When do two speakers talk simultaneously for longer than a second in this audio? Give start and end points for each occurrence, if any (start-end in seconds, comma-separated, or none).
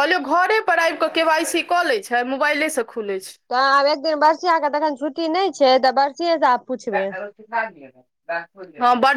none